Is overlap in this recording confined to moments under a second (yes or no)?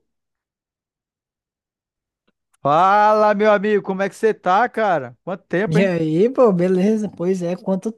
yes